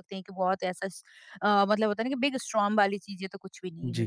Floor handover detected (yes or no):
yes